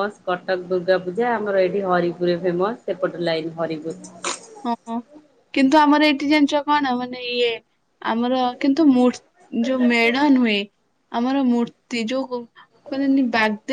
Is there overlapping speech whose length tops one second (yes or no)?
no